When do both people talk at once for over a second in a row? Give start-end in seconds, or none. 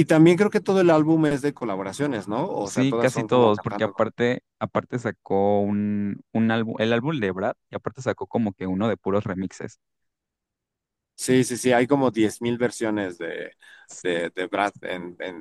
2.6-4.0